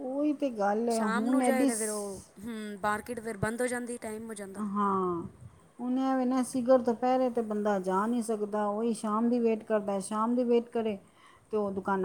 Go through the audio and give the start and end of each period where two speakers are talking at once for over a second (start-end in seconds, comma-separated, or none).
0.9-2.2